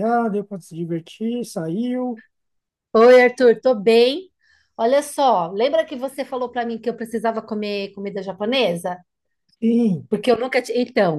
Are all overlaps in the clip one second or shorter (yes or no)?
yes